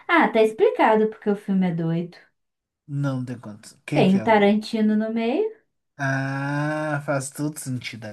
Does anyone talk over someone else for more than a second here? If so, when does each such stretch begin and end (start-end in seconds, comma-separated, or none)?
none